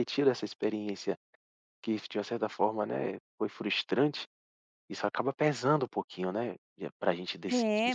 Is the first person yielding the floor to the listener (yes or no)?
yes